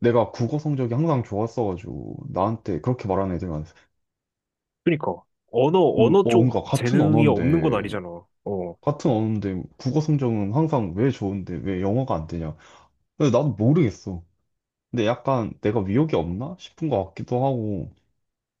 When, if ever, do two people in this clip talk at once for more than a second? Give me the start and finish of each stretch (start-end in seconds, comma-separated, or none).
6.0-7.9